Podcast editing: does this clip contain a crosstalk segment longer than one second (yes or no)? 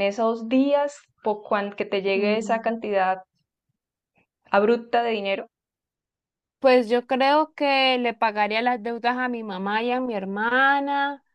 no